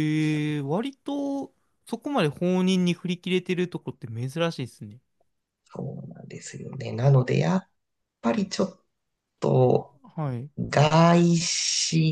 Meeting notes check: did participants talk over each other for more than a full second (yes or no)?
no